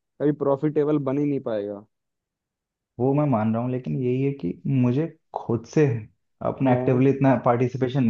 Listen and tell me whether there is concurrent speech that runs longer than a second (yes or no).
no